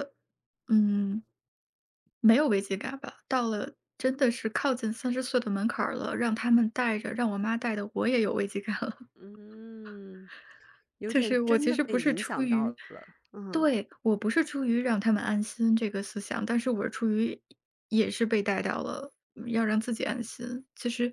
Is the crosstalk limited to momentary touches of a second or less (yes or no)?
no